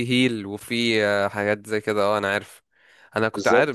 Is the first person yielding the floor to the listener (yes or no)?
no